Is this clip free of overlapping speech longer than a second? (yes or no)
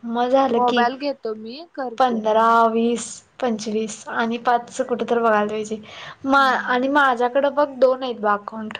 yes